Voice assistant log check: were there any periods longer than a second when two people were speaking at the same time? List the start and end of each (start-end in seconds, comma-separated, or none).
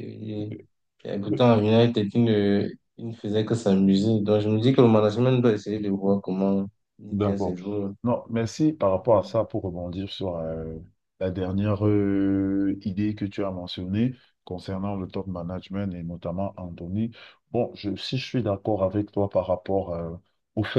none